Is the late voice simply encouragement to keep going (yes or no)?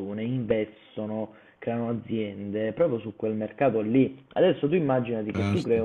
yes